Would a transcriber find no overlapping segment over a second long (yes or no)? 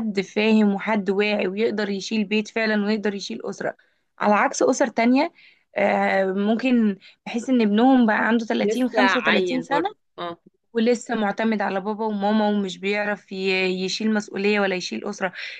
no